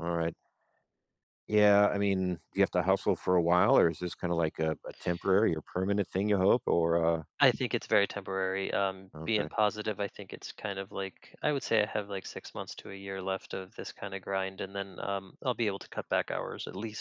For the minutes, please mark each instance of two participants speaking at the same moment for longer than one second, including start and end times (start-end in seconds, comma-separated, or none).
none